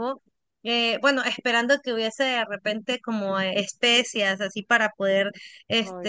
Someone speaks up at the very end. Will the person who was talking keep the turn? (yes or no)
yes